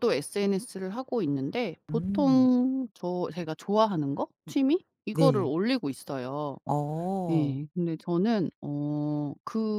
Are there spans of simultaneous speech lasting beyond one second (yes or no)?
no